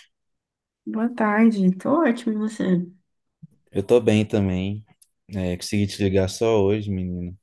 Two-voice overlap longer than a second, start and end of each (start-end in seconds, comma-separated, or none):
none